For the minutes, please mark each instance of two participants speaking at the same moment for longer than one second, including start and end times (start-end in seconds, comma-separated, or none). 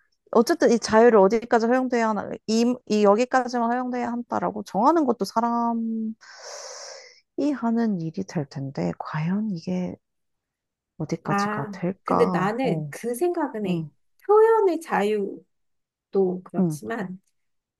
11.2-12.9